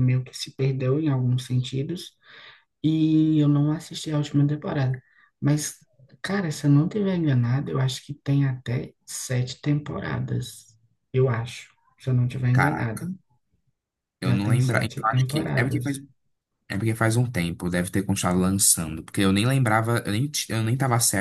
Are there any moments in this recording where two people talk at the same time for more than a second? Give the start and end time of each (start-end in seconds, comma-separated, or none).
14.2-16.0